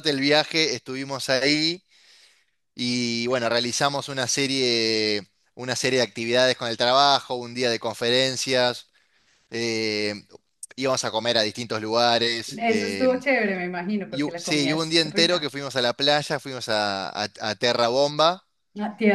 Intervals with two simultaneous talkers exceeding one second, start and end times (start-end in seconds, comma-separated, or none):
14.1-15.5